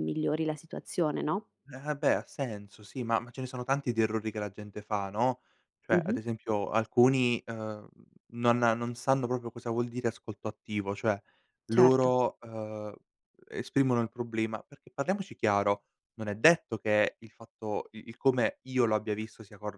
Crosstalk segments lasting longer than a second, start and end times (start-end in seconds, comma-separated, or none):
none